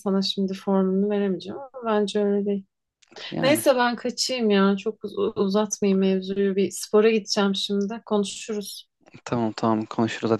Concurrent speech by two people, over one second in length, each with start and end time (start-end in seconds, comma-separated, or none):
none